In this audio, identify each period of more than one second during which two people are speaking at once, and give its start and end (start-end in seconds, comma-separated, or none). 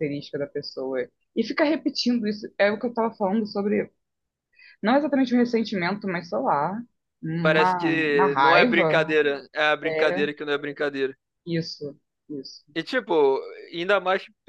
7.4-9.0